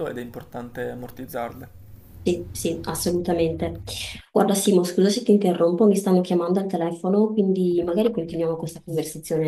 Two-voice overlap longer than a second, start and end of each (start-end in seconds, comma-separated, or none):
none